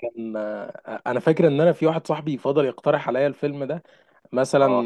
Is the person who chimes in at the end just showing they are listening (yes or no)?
yes